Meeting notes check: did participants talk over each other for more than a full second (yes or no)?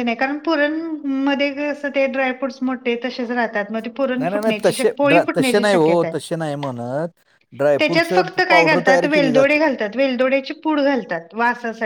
yes